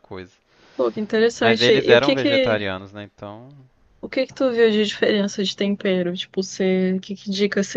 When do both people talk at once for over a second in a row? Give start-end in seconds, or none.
1.4-2.6